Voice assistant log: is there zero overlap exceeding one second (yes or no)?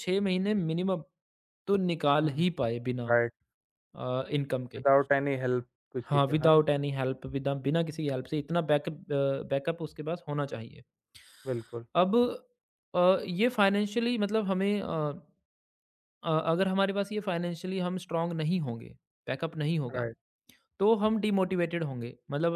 yes